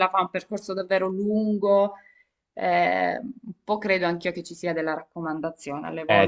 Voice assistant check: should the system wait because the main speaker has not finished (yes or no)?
no